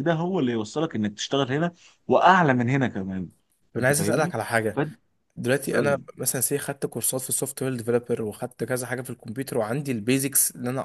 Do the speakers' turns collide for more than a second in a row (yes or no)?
no